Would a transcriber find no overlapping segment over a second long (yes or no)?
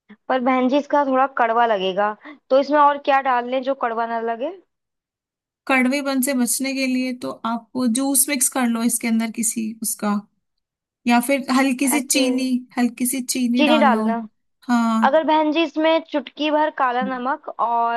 yes